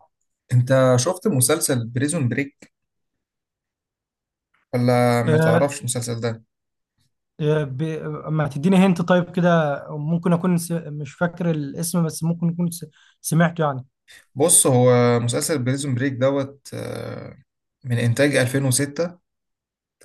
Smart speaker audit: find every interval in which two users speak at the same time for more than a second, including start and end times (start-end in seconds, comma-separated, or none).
none